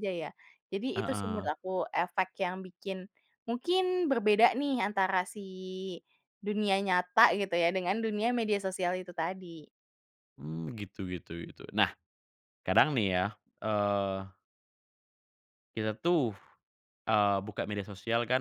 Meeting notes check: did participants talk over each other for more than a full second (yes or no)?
no